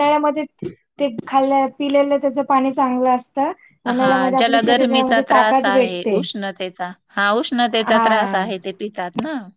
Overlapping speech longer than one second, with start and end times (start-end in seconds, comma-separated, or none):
4.0-6.2